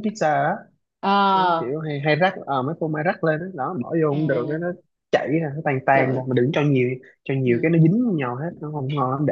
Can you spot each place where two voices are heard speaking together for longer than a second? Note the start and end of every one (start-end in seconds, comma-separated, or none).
none